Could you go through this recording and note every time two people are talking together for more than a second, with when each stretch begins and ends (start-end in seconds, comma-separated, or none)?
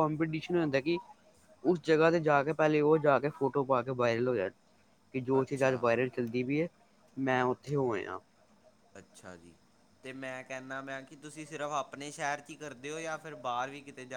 none